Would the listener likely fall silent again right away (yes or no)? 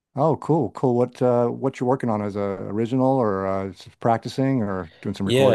no